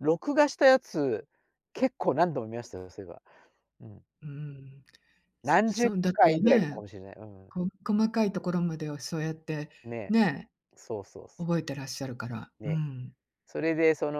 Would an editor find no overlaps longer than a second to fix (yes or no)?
no